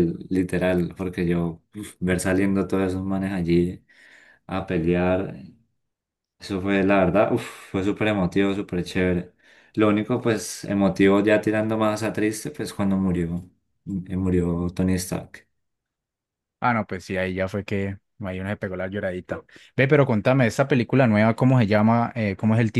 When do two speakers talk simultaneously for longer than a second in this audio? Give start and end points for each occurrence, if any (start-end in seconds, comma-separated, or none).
none